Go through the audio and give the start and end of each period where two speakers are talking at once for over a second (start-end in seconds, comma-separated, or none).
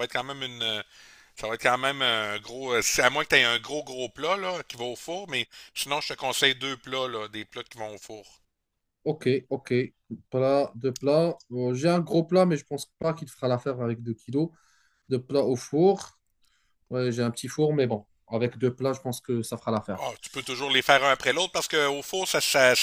none